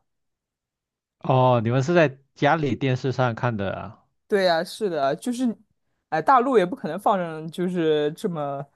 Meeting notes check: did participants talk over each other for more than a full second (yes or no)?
no